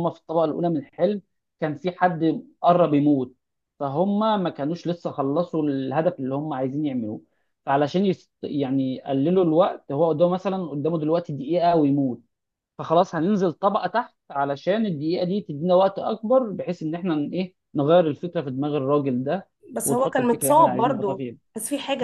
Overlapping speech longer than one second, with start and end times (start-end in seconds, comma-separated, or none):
19.8-21.4